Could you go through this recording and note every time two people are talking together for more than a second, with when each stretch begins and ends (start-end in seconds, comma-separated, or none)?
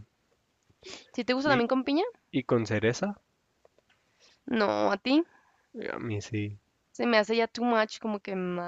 none